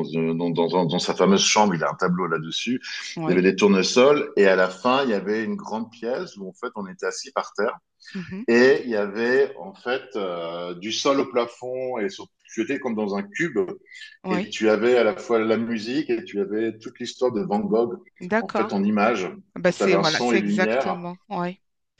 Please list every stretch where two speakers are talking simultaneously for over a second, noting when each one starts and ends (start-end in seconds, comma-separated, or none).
19.7-21.0